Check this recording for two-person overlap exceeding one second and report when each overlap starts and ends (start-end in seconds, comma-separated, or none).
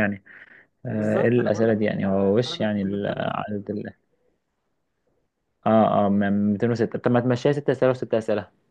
0.9-3.3